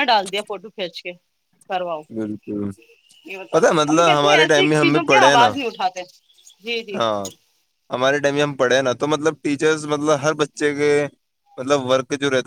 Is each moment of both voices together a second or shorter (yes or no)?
no